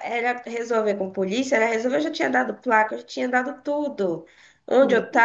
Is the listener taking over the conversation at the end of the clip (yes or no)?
no